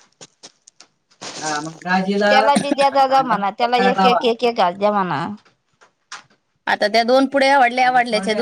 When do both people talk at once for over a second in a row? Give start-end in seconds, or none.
2.3-4.2